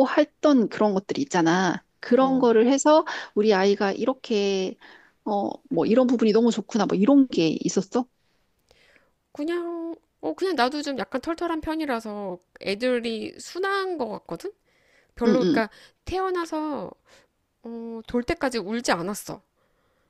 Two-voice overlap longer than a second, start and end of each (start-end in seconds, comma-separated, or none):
none